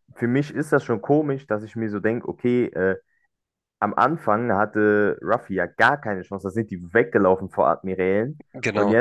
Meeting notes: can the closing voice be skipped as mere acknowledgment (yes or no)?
yes